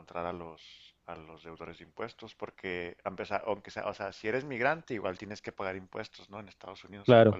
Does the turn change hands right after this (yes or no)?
no